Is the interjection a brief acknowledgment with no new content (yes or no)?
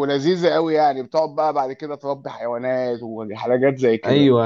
no